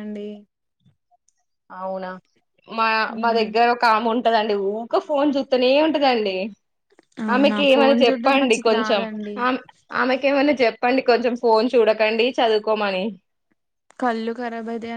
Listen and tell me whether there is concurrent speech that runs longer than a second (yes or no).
yes